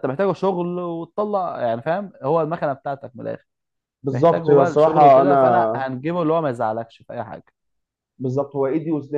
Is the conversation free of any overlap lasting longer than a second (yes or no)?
no